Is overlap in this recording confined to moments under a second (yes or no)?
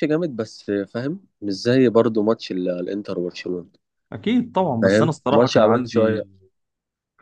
no